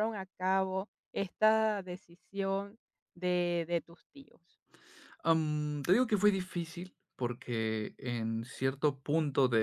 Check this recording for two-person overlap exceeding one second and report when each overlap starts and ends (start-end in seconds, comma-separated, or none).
none